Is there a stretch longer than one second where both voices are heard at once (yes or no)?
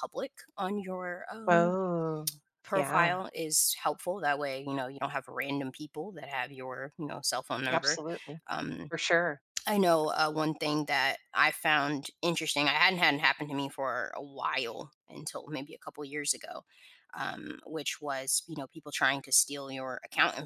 no